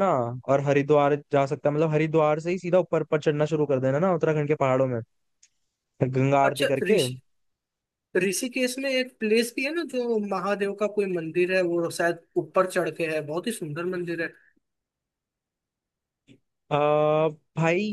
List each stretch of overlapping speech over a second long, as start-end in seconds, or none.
none